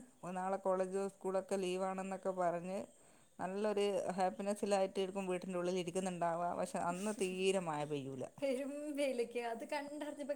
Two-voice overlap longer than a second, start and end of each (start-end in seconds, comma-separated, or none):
none